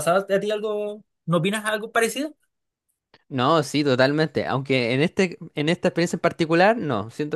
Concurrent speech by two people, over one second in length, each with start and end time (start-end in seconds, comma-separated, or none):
none